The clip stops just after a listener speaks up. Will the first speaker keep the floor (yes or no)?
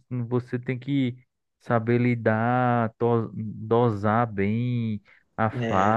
yes